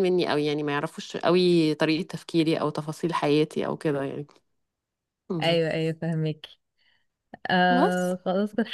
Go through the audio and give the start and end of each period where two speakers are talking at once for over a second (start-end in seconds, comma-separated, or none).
none